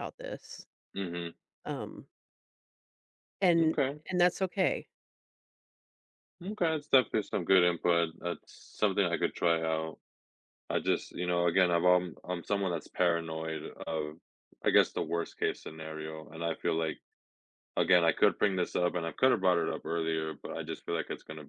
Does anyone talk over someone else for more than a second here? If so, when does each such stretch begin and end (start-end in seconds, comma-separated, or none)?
none